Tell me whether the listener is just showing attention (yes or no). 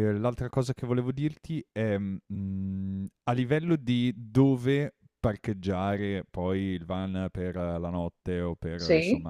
yes